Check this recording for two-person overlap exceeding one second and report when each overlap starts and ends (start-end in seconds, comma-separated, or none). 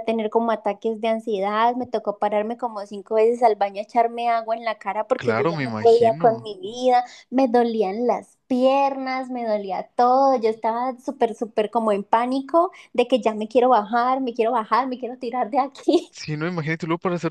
5.2-6.5